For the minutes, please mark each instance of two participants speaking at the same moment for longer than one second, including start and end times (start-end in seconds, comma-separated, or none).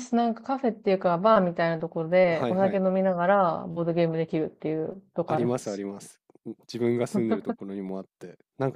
none